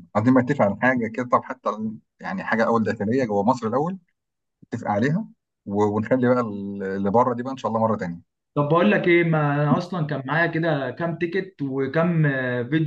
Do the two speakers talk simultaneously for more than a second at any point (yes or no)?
no